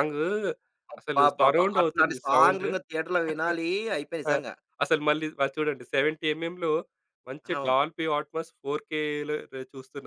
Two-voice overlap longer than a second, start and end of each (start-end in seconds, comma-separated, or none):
1.0-2.7